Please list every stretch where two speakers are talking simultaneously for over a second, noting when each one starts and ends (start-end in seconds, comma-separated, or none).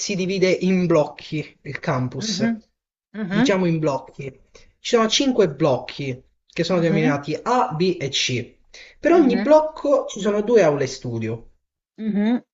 none